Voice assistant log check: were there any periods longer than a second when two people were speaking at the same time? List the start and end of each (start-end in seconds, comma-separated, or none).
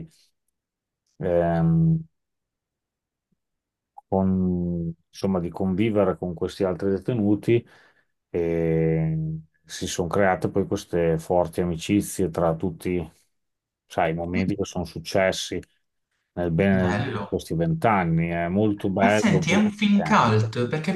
19.0-20.4